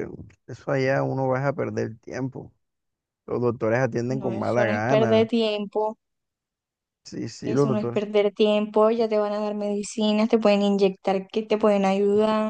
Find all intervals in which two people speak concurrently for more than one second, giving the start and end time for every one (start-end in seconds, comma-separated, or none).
4.1-5.3